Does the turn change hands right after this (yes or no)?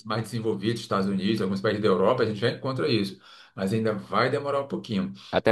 yes